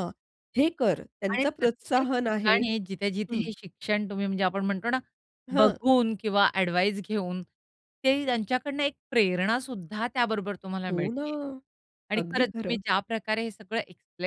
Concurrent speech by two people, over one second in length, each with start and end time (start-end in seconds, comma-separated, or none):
1.3-2.6